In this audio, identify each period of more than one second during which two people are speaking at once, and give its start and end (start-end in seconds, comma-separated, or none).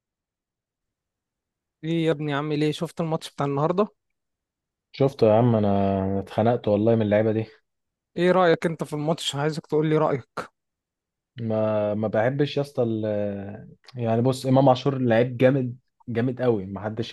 none